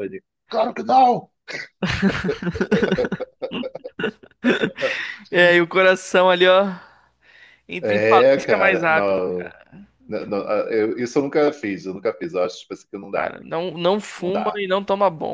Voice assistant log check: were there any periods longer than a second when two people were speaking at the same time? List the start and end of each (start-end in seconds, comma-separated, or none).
7.8-9.2